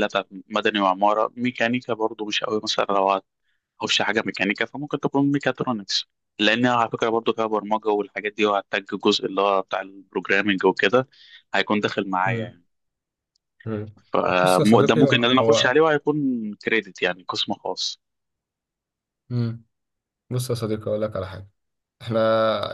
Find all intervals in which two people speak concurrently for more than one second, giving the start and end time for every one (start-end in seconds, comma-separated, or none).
14.4-15.7